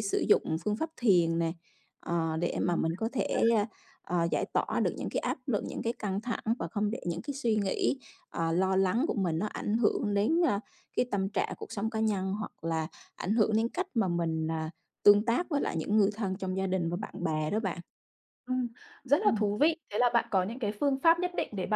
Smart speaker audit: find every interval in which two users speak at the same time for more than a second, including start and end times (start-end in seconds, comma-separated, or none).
none